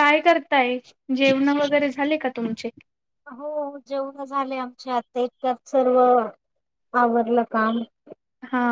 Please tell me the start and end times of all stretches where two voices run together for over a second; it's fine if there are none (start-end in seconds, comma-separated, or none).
none